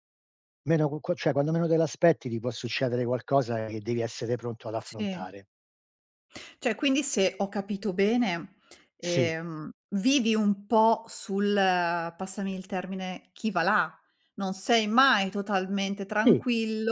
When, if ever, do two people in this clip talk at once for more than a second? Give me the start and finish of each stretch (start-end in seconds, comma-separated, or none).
none